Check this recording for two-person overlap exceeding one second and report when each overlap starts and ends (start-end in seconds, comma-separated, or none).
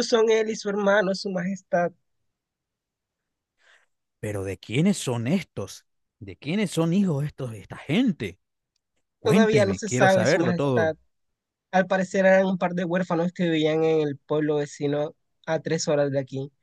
9.2-11.0